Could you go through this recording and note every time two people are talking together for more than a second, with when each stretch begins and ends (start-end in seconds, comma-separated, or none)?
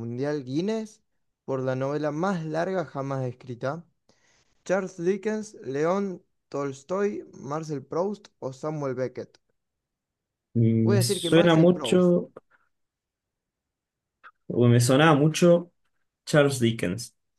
10.8-12.1